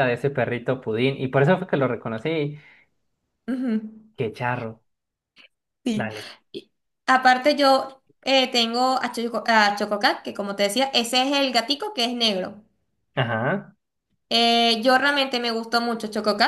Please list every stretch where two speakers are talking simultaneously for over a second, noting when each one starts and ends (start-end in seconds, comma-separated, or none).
none